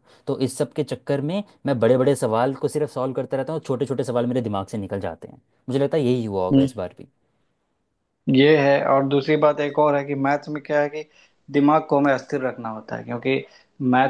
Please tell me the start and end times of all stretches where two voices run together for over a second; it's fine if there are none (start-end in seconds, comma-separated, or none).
none